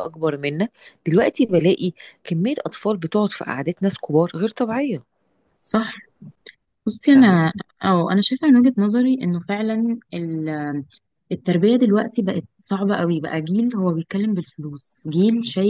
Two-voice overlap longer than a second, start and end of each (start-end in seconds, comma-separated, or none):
none